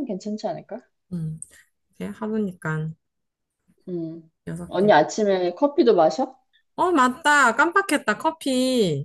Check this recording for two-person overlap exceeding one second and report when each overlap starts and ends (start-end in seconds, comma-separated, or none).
none